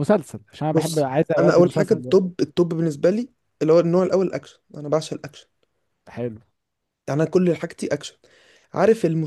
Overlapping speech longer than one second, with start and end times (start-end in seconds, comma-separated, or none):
0.7-2.2